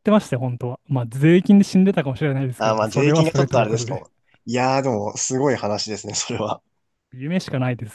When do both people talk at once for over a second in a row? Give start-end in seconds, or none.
2.6-4.0